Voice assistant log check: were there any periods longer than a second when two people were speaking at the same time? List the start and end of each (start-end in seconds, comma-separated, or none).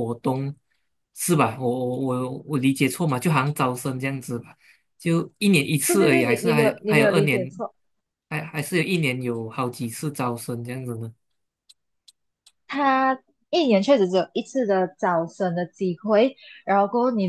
5.8-7.5